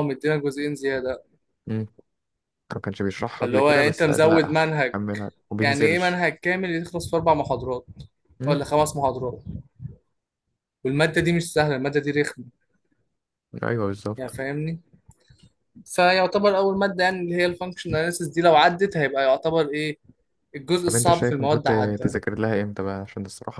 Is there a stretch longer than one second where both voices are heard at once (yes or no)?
yes